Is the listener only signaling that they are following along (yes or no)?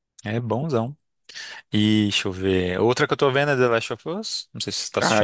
no